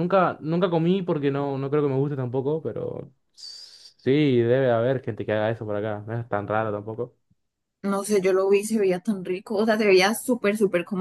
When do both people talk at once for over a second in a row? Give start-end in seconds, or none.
none